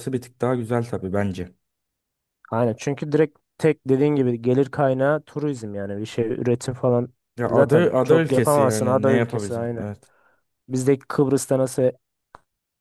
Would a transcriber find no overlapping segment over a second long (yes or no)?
no